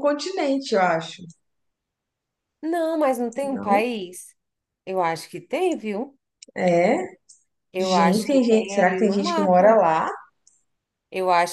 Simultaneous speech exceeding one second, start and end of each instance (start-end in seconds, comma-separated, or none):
7.8-9.8